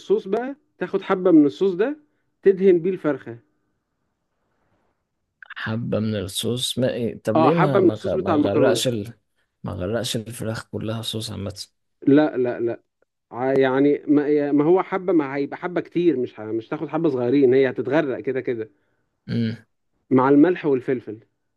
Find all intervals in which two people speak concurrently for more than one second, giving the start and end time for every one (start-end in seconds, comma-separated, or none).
7.3-8.8